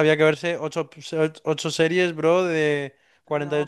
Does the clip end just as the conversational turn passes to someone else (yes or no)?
yes